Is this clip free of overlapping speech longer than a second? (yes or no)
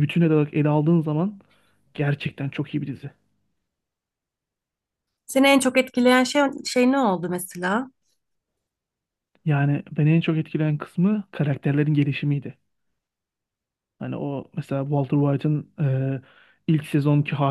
yes